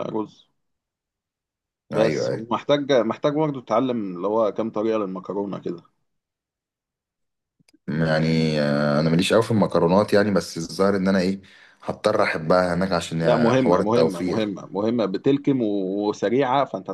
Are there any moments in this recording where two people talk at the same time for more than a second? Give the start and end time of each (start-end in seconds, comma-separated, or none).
13.2-14.4